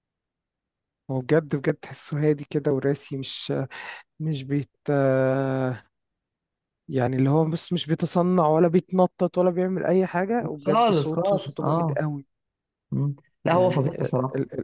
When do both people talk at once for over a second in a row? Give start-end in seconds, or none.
10.6-12.0